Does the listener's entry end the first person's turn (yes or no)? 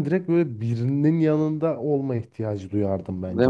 yes